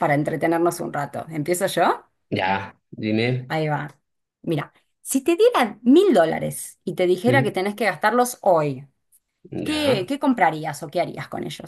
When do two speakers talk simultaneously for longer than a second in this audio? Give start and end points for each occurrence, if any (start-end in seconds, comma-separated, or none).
none